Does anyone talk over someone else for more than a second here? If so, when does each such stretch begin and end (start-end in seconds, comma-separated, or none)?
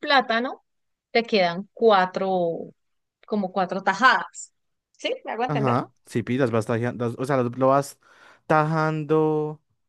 none